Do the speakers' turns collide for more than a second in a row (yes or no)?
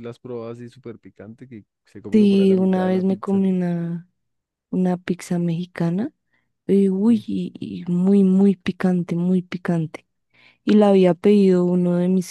yes